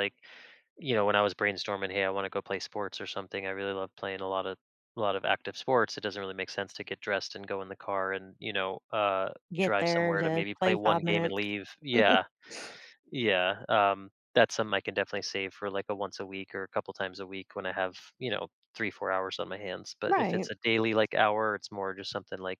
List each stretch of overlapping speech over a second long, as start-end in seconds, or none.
9.5-11.4